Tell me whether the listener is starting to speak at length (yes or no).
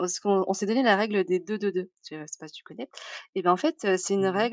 no